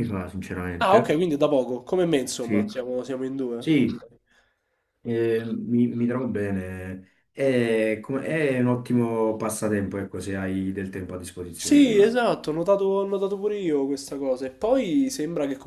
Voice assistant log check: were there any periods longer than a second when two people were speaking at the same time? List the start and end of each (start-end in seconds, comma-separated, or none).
none